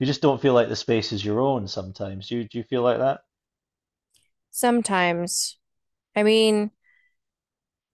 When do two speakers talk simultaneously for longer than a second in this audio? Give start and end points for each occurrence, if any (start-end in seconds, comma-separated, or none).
none